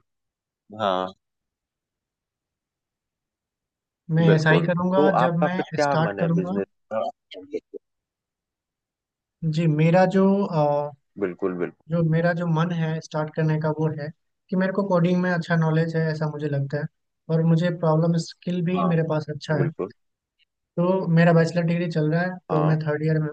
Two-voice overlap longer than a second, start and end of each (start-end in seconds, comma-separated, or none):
4.3-6.5